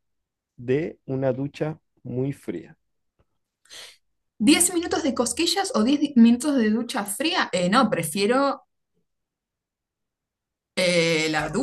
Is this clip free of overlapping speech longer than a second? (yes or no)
yes